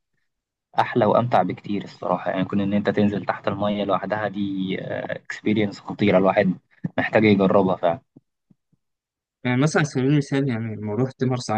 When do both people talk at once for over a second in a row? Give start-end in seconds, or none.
none